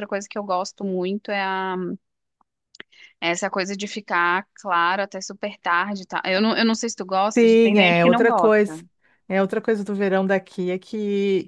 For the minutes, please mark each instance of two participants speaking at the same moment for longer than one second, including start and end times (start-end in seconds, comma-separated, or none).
7.4-8.7